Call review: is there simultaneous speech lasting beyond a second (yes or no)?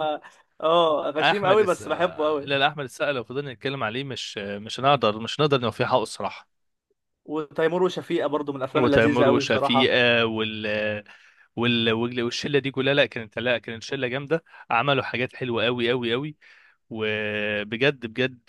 yes